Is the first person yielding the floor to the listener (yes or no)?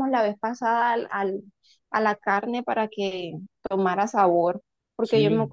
no